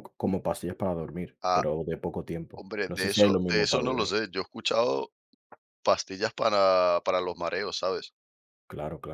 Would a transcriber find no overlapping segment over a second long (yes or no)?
no